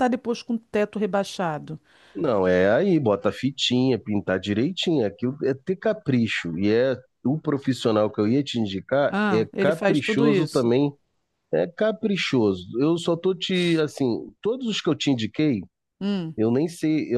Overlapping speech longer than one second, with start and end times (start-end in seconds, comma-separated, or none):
9.1-10.7